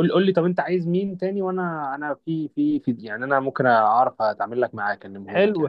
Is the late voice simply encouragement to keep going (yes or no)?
no